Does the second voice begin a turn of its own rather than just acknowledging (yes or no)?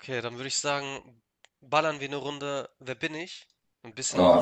yes